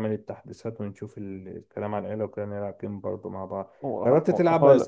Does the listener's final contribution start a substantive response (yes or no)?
no